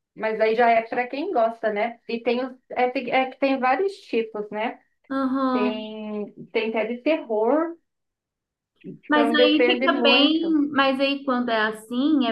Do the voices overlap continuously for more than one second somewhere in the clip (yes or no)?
yes